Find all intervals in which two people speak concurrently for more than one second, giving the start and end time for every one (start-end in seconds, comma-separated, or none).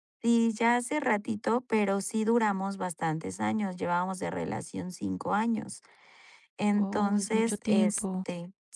6.7-8.2